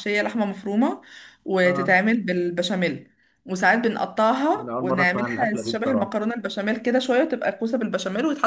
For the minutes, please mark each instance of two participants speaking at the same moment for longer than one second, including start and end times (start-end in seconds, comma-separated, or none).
4.6-6.2